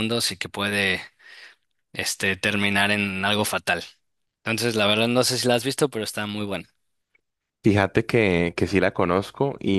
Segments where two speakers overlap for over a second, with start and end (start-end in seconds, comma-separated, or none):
none